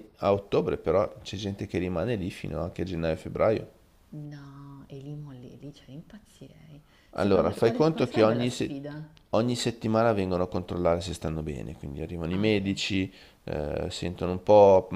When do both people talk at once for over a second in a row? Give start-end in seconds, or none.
7.1-8.8